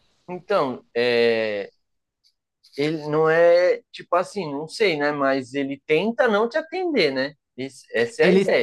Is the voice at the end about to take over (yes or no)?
yes